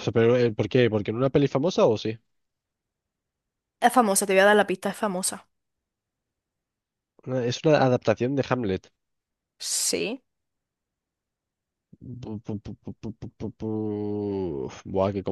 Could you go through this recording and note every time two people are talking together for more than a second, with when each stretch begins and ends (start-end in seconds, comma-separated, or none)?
none